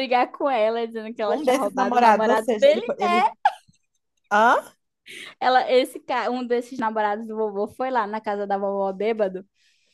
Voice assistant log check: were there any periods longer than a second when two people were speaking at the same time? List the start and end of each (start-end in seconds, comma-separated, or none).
1.3-2.9